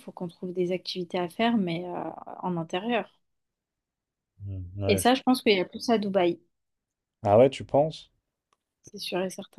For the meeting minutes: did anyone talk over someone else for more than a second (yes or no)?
no